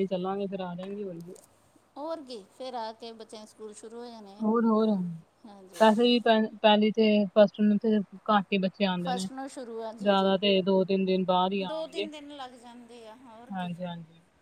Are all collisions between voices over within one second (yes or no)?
yes